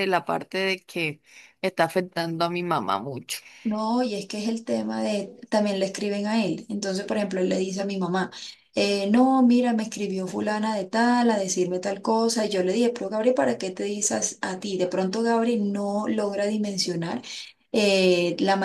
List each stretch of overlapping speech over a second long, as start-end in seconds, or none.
none